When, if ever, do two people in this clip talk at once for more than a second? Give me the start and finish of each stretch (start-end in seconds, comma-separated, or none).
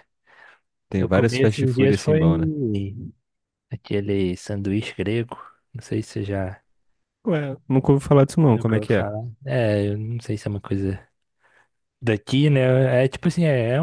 1.0-2.2